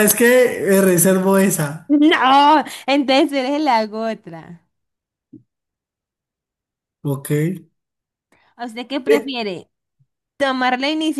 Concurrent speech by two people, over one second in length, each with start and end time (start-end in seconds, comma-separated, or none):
none